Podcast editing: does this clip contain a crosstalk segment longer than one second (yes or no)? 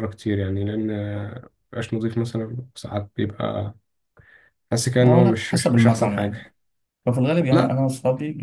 yes